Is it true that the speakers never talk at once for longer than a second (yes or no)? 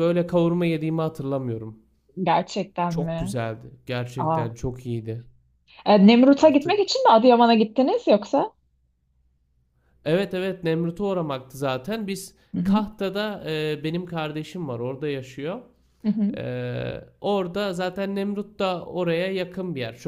yes